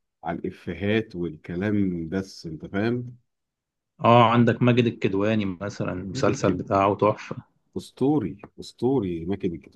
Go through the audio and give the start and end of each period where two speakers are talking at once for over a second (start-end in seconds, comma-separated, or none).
none